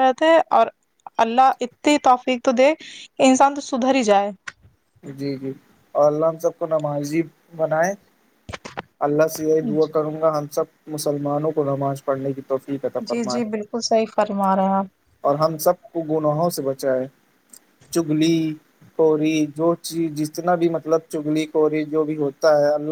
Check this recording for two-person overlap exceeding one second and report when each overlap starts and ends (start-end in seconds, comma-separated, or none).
none